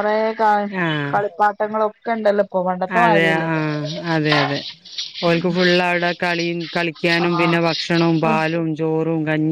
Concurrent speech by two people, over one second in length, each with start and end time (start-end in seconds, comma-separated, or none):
none